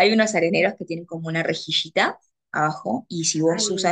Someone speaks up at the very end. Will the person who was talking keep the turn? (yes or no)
yes